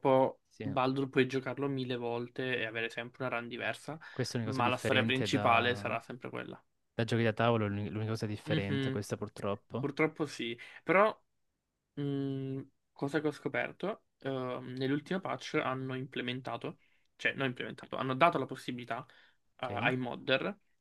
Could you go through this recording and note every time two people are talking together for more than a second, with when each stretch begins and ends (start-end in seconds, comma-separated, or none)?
4.4-5.9